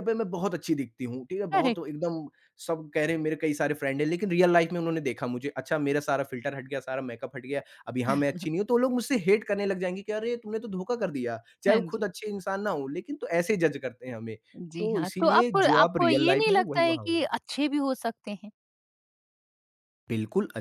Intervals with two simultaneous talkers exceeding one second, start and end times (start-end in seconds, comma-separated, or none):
14.8-17.2